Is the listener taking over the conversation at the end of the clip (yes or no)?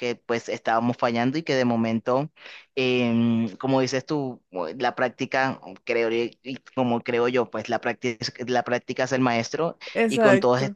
no